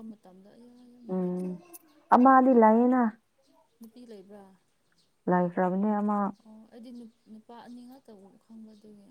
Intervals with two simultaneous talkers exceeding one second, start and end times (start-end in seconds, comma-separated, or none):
none